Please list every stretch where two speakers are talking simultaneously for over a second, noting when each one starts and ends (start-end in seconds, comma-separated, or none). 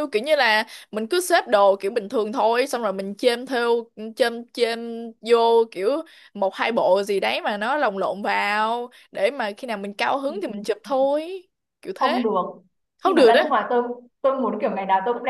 none